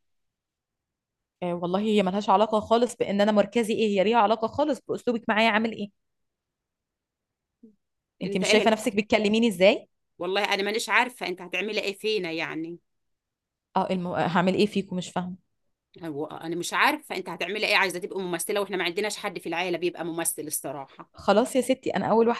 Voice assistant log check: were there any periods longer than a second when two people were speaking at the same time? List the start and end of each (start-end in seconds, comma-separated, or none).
none